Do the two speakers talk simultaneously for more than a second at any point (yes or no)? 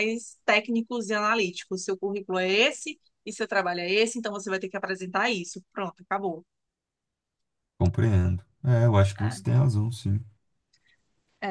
no